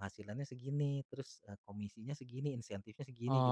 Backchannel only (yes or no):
no